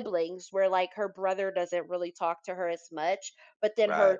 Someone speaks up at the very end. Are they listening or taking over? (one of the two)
listening